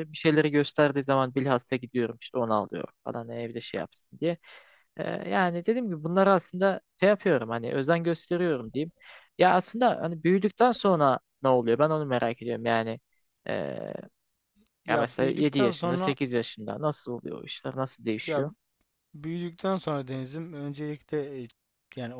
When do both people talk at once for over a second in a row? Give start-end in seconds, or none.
14.9-16.1